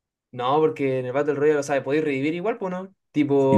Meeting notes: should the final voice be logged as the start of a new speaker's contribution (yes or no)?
yes